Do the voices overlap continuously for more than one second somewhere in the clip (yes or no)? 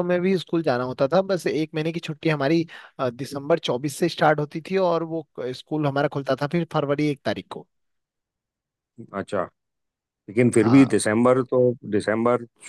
no